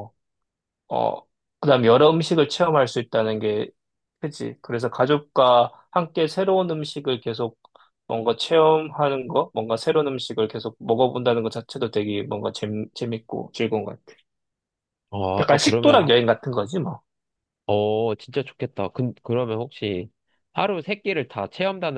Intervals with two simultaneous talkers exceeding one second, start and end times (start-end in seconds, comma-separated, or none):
none